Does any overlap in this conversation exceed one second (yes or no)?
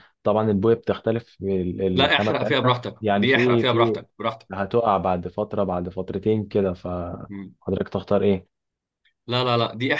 yes